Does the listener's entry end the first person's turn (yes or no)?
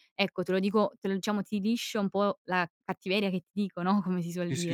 yes